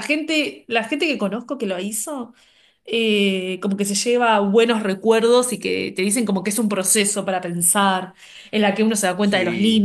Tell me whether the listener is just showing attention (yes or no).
yes